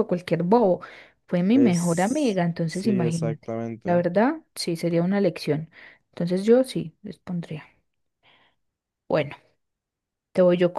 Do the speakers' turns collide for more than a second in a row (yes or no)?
yes